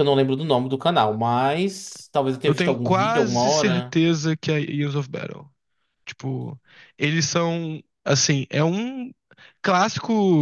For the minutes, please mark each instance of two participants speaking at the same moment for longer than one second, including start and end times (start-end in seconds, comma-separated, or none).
2.4-4.0